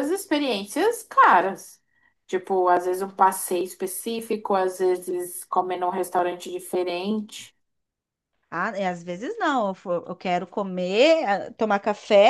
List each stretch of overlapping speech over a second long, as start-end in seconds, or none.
none